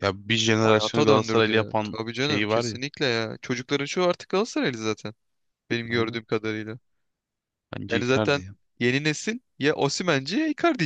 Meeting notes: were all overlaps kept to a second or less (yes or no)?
no